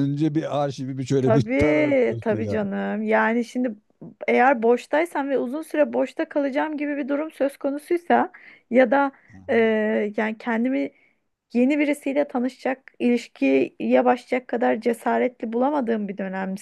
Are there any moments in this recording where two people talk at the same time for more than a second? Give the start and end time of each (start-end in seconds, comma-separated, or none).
1.2-2.6